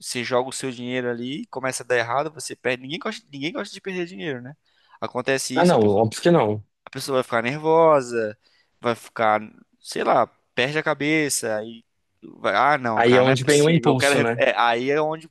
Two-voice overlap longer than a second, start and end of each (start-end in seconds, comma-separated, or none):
12.9-14.4